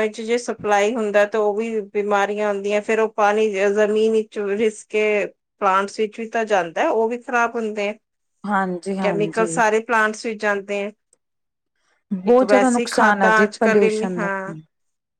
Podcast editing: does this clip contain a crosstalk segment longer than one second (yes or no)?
yes